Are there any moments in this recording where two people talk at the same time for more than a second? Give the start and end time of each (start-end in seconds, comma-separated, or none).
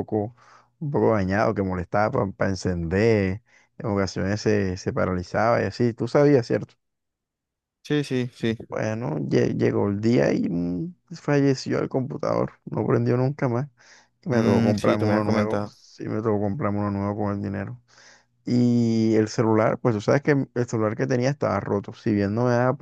14.3-15.7